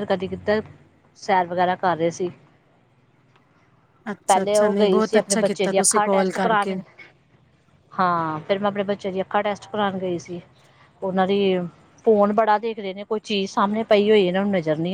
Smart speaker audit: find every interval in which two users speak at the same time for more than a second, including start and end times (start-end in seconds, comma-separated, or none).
4.3-6.8